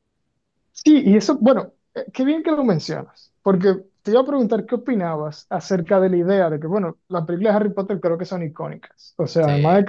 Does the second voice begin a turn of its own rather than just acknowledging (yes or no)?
no